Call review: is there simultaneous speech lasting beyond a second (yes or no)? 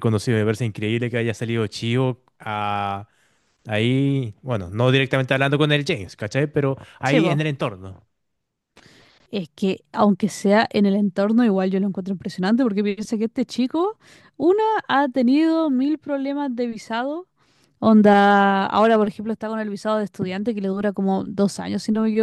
no